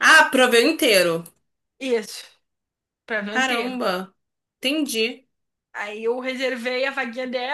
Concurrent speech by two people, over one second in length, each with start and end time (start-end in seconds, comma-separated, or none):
none